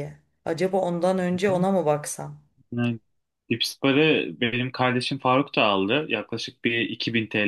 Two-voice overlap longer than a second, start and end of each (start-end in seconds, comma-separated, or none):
none